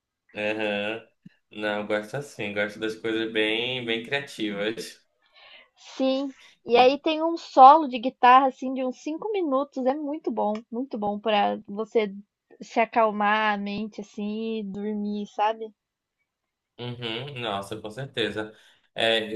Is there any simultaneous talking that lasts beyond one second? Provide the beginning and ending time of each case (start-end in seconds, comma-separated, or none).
none